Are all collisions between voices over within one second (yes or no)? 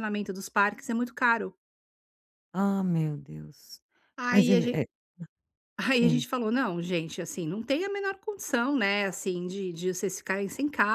yes